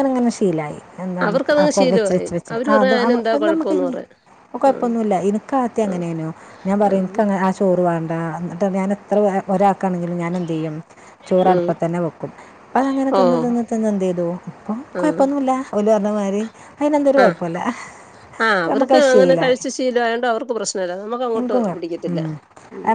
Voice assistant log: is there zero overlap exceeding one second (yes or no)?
no